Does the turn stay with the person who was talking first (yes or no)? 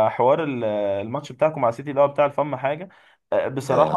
yes